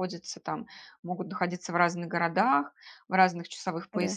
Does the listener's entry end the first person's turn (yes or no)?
no